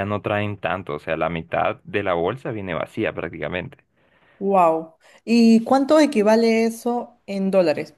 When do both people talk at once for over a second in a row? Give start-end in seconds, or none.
none